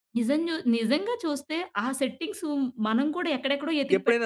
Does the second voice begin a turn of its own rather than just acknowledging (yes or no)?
yes